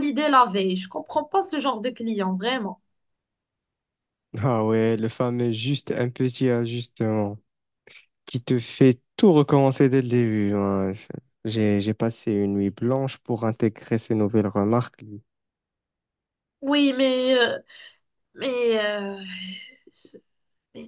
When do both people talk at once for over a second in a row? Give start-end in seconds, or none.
none